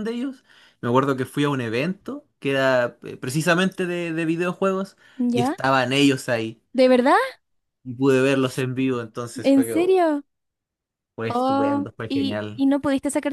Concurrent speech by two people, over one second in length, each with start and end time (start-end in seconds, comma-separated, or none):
11.3-12.6